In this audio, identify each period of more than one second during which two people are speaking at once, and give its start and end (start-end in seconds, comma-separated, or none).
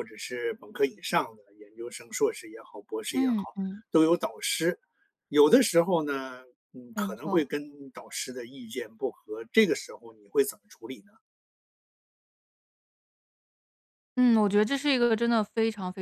none